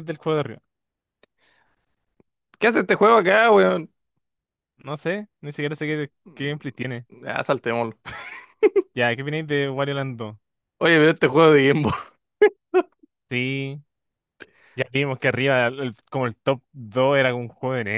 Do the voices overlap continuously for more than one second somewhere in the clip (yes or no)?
no